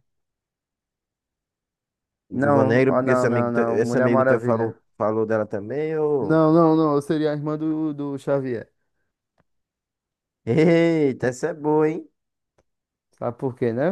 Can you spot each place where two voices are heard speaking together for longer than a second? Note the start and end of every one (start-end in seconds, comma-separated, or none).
2.3-4.8